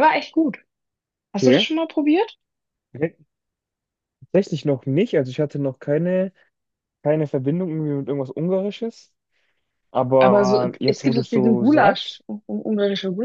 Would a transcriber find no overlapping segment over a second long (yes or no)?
no